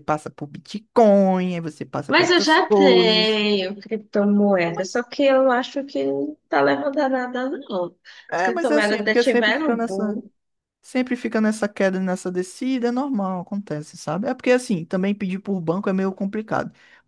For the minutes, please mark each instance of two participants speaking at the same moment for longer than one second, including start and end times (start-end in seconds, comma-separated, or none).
2.1-3.5, 8.3-10.2